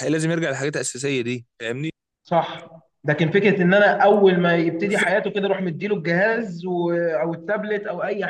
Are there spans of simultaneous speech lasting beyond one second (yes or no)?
no